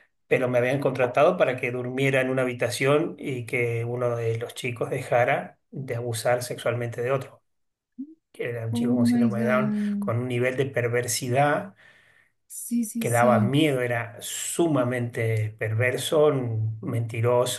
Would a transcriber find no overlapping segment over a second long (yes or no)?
no